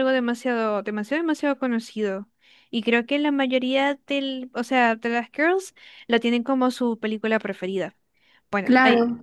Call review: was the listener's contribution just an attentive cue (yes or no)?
no